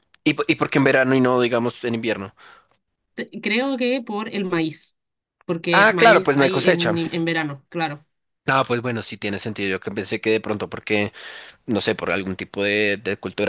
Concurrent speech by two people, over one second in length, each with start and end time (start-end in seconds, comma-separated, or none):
5.7-6.9